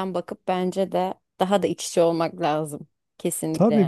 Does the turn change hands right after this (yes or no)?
yes